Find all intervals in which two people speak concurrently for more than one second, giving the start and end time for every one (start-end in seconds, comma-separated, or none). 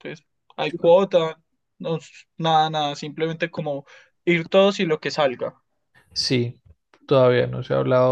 none